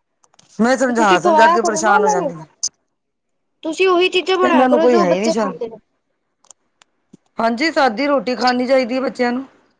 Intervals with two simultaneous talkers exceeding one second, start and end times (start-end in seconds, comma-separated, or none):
0.9-2.3